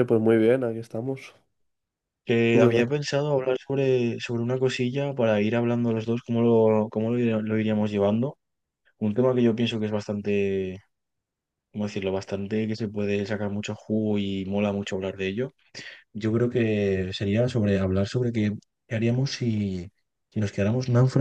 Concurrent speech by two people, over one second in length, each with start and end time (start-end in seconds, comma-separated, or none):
none